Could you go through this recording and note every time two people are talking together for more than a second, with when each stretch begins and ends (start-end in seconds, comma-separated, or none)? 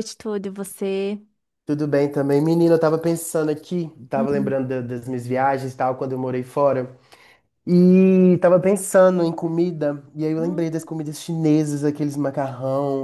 none